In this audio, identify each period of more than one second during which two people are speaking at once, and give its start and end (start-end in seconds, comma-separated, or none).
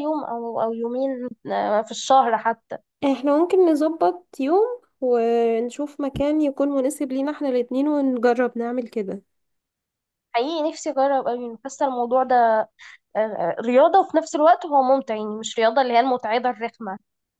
none